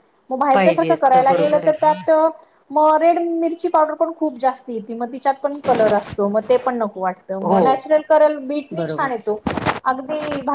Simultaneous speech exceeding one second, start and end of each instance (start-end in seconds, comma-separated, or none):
0.5-1.9